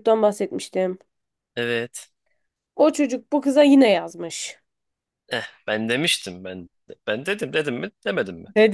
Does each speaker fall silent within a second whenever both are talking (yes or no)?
yes